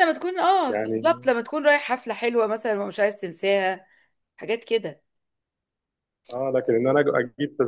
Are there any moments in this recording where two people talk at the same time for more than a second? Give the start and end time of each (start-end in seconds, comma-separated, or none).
none